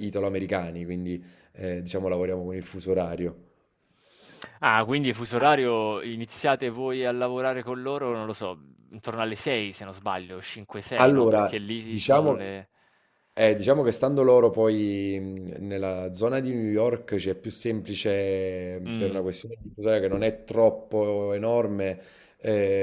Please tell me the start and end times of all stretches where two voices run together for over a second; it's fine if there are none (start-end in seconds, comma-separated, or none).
10.9-12.5